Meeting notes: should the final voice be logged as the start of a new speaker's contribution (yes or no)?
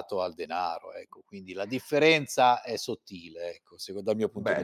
yes